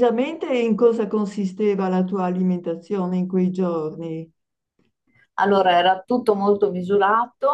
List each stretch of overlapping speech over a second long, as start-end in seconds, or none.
none